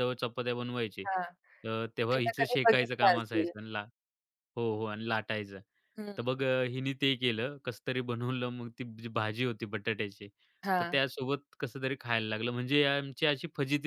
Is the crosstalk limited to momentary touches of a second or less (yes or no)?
no